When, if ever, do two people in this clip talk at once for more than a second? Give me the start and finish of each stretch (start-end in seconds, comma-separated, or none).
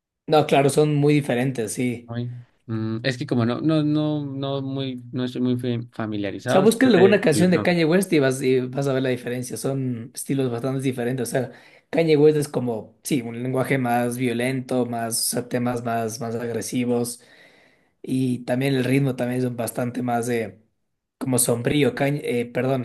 6.2-7.8